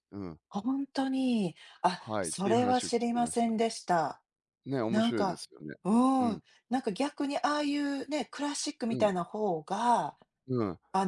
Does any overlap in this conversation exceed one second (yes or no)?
yes